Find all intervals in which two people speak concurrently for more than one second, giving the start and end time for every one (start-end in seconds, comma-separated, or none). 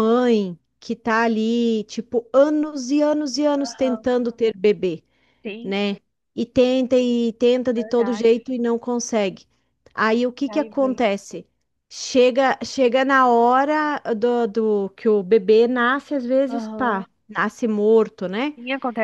none